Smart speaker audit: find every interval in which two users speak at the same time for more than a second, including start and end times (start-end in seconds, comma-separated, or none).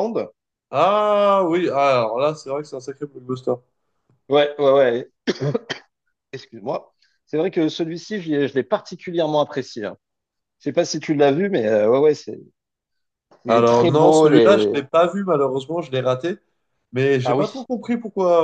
13.5-14.8